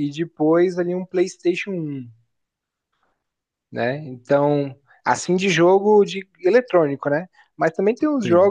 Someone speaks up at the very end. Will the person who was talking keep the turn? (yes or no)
yes